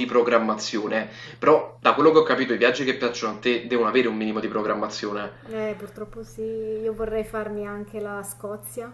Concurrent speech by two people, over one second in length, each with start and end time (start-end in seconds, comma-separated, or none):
none